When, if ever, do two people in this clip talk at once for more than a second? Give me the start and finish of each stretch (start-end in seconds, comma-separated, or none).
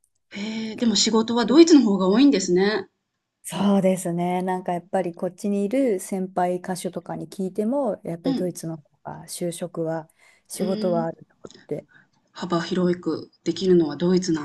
none